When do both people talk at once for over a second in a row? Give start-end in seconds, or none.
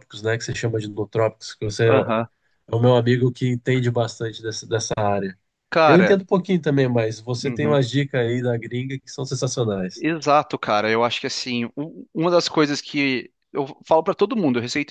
none